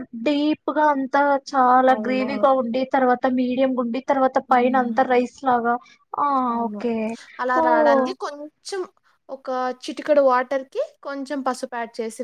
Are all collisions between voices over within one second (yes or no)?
yes